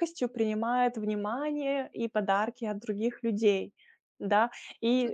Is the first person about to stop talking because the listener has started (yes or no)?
no